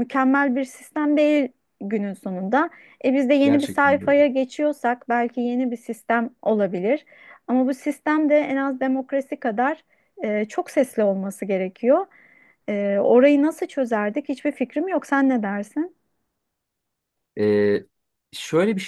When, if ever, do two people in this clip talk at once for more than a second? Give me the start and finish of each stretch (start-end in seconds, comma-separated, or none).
none